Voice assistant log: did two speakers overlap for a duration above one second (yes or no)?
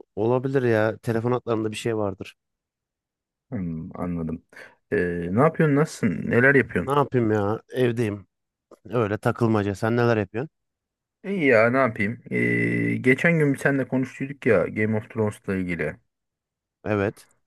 no